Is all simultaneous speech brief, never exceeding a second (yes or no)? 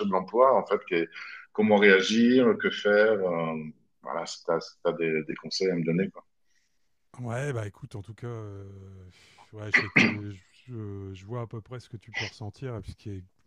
yes